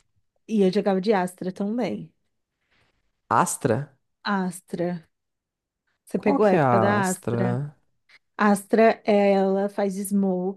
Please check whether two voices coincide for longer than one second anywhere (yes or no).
yes